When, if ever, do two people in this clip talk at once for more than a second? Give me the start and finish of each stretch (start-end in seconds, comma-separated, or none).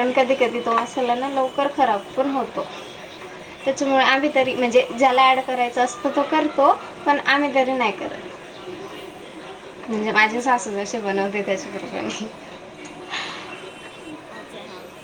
10.3-11.8